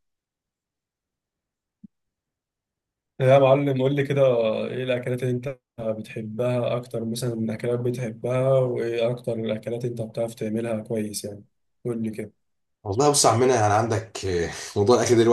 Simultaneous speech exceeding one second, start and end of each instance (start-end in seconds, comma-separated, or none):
none